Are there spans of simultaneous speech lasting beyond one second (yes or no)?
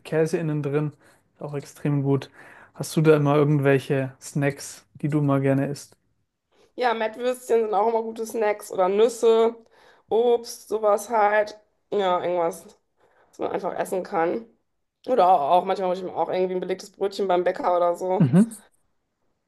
no